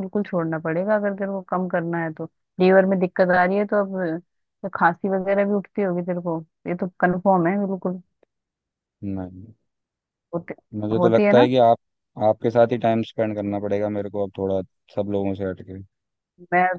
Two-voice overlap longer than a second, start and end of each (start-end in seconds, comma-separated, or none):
none